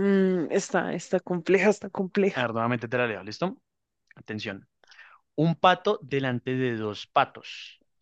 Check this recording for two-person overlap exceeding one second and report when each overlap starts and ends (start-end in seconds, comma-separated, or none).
none